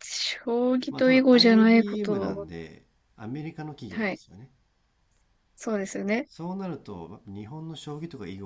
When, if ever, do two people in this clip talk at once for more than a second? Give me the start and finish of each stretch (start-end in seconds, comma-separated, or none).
0.9-2.5